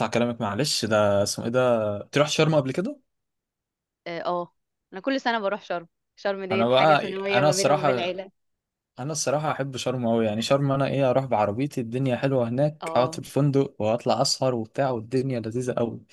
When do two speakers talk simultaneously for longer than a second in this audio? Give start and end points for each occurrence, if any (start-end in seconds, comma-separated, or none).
6.5-8.2